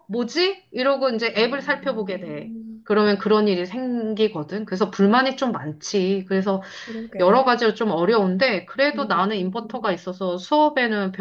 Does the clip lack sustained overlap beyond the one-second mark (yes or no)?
no